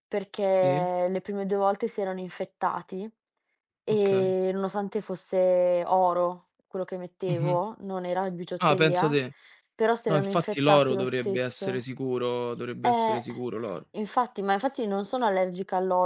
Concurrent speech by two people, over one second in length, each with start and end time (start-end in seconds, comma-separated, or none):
10.1-11.9